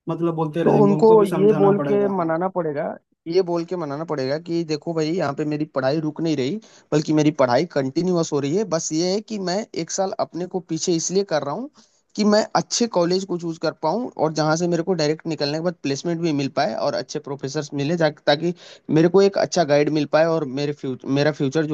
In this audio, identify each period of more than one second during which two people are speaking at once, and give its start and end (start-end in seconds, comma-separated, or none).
0.6-2.3